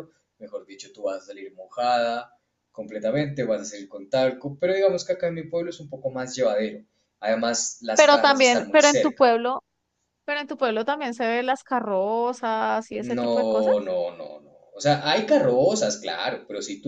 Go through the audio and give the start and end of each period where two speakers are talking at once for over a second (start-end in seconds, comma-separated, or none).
7.9-9.4